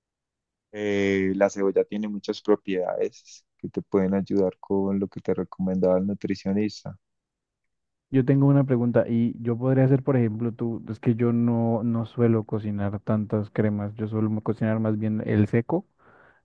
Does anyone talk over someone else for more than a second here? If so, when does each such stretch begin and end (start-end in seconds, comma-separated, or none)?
none